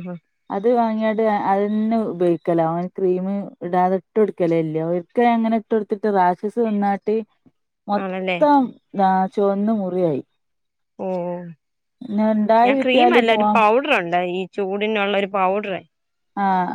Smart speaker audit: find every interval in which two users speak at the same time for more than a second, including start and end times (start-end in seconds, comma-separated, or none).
12.1-13.6